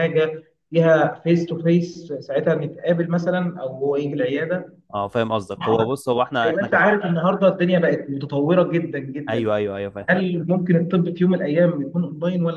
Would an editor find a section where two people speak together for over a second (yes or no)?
no